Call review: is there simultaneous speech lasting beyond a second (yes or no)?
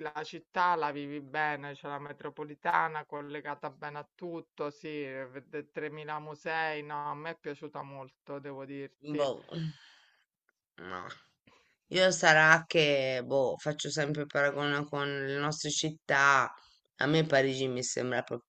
no